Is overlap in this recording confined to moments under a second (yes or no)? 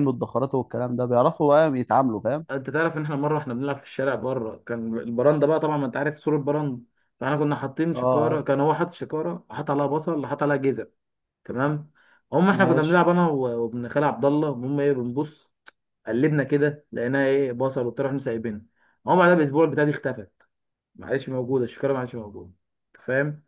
yes